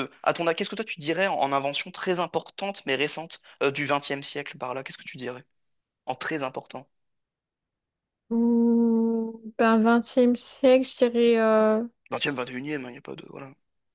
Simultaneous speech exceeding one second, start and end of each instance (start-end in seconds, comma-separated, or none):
none